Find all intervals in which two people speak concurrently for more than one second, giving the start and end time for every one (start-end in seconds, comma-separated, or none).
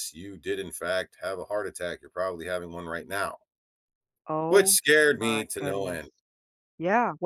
4.5-6.1